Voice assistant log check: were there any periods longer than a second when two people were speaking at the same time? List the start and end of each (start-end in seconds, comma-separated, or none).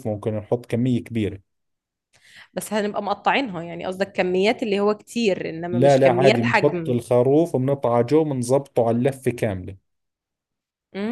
5.7-6.9